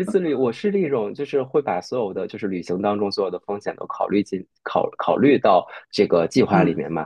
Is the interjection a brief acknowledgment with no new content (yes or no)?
yes